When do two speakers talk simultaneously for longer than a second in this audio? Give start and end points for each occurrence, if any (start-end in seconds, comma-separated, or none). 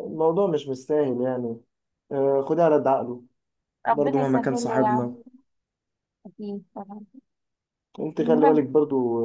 3.9-5.1